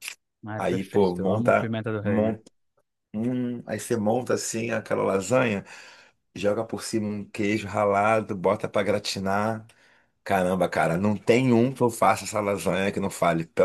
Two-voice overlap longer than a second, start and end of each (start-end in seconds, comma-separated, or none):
0.6-2.4